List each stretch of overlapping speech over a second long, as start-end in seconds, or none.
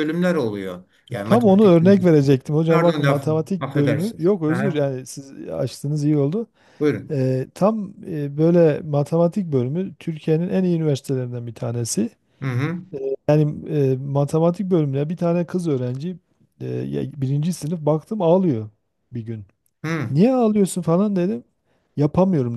2.7-4.9